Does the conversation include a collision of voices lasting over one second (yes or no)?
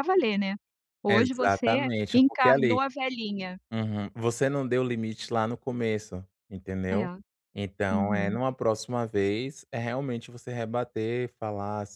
yes